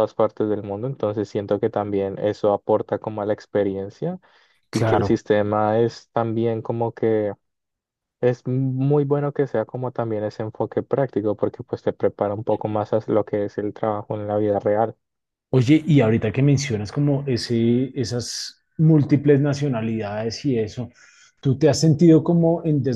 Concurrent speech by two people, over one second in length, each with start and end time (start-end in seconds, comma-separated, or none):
none